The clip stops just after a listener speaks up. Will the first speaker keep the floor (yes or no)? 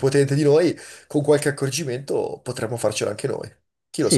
no